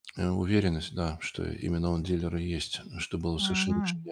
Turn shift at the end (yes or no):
yes